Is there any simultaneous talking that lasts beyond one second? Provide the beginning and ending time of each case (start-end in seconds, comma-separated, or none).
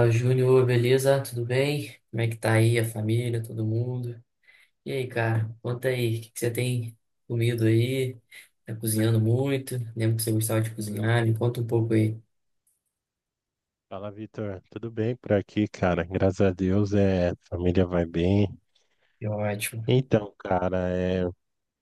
none